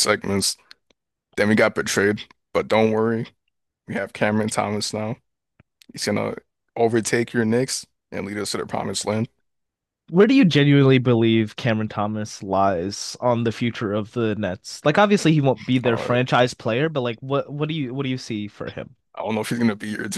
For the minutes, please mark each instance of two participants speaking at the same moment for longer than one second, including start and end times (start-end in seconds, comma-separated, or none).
none